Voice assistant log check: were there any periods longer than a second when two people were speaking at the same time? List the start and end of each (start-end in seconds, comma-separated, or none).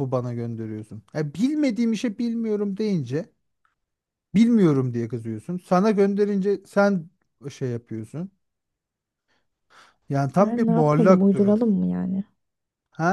10.4-11.6